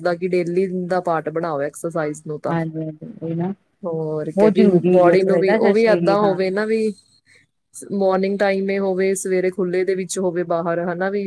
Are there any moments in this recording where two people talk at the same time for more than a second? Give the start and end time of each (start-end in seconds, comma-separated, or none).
4.4-6.4